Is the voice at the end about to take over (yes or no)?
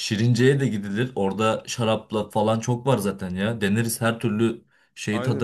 yes